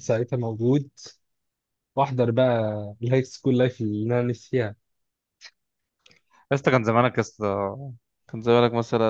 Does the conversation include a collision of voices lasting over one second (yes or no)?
no